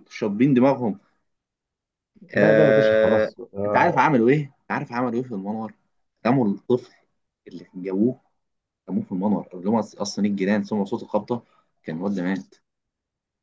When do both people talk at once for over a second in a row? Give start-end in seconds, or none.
2.4-4.0